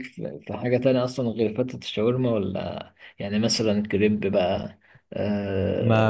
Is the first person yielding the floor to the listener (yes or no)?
yes